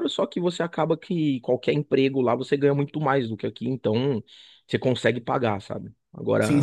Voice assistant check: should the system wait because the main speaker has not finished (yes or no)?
yes